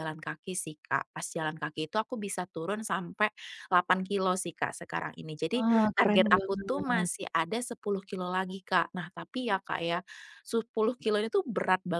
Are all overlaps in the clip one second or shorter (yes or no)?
no